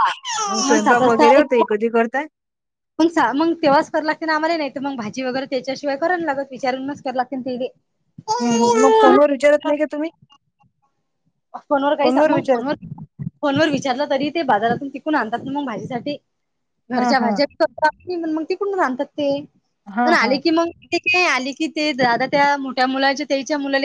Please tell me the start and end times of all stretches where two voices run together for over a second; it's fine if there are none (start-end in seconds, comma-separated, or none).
none